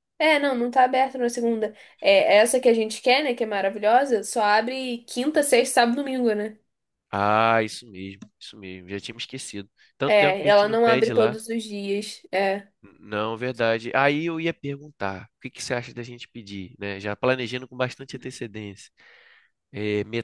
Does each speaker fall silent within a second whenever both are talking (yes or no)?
no